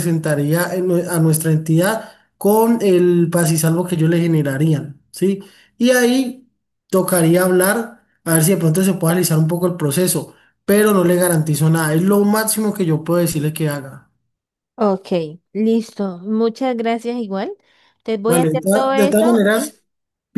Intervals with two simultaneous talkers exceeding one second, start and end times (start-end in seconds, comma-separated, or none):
18.2-19.7